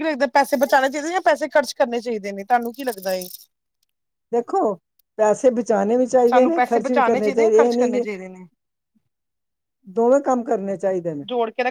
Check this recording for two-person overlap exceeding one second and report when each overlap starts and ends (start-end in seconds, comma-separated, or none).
6.3-8.0